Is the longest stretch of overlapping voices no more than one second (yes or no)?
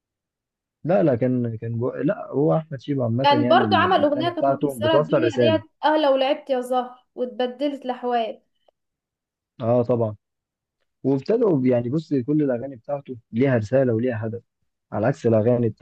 no